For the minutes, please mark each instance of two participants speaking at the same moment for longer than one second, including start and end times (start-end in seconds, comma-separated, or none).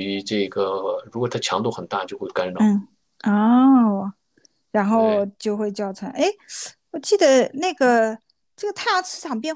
none